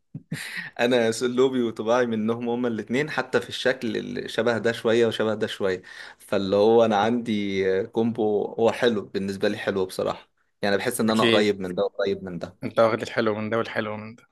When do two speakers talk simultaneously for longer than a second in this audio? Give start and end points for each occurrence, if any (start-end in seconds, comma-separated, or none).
none